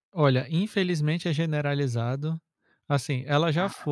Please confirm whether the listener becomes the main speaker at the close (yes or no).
no